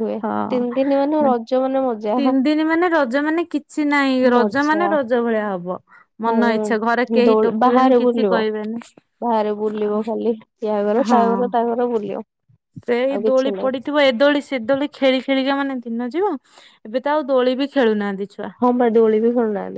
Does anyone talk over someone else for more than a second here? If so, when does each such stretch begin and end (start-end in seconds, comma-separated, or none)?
6.3-8.3